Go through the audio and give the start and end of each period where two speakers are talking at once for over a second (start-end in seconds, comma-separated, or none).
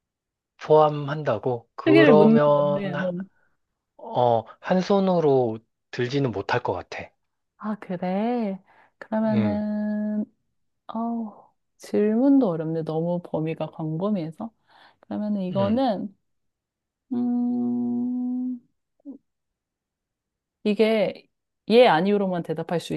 1.8-3.1